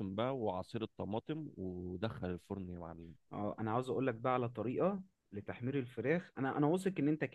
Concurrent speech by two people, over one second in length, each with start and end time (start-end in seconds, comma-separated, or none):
none